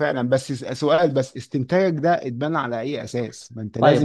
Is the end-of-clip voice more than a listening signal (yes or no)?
no